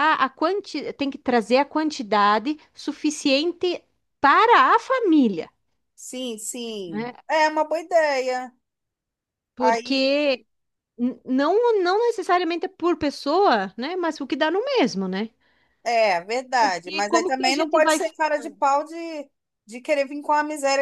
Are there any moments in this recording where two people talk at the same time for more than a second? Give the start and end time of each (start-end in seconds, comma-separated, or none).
16.6-18.0